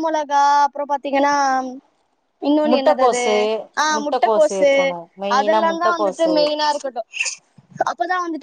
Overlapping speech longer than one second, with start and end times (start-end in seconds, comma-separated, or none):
4.0-6.3